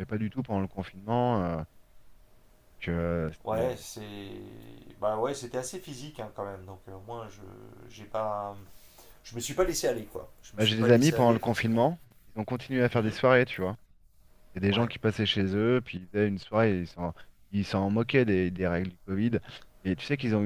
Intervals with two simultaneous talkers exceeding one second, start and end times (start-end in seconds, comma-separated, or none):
10.6-11.8